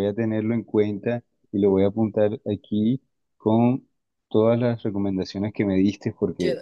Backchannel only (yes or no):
no